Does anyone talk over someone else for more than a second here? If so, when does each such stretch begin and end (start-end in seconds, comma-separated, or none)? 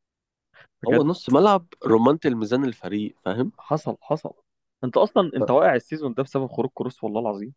none